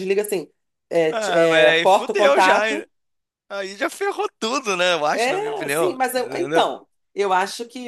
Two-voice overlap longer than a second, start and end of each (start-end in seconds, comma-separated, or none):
1.1-2.9, 5.1-6.7